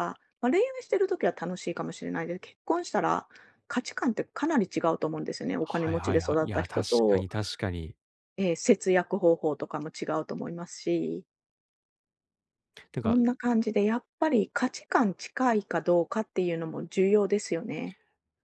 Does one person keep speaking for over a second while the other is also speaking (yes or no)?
yes